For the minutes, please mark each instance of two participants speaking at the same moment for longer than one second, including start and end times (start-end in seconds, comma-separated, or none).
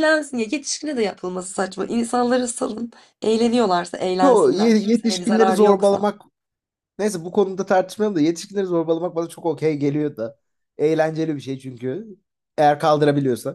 4.2-6.1